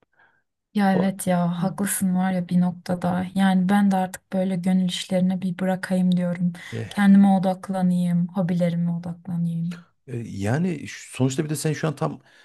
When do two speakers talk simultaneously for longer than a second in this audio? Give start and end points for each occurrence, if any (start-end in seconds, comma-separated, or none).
none